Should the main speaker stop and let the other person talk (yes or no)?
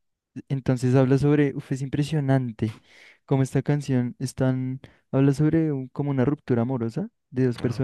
no